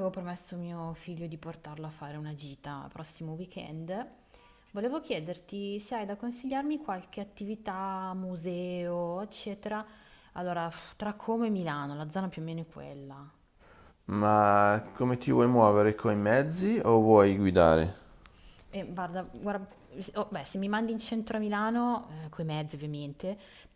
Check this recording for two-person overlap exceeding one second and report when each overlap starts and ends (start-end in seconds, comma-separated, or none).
none